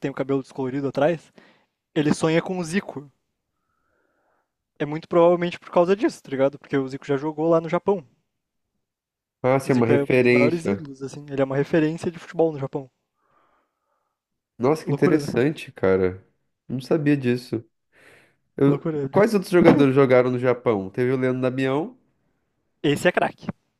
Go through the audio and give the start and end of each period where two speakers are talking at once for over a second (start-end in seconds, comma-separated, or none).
9.6-10.8